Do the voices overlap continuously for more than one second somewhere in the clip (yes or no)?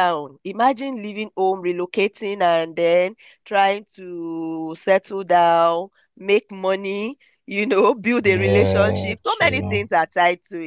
yes